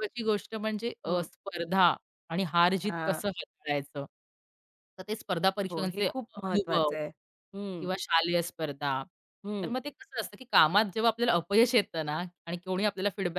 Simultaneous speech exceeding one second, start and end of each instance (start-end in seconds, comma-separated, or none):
5.7-6.9